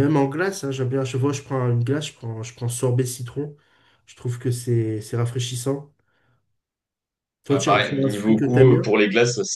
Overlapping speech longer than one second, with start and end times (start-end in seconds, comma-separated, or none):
7.5-8.9